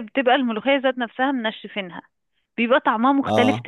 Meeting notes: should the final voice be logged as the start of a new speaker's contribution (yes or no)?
no